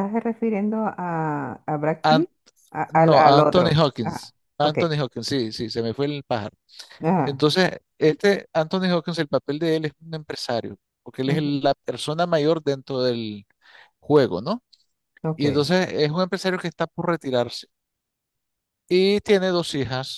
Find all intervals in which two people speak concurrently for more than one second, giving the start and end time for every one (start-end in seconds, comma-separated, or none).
2.9-4.8